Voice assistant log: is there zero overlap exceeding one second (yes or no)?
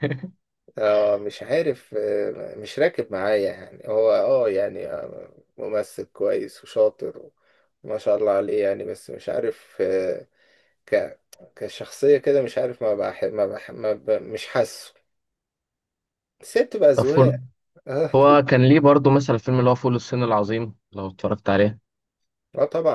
yes